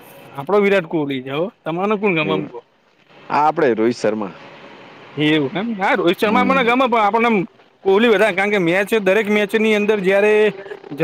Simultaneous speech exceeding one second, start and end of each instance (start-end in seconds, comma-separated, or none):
none